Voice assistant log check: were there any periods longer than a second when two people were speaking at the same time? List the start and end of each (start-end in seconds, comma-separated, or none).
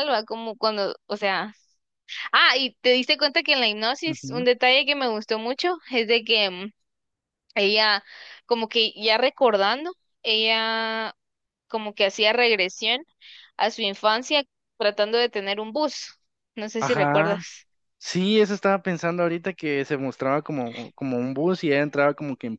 none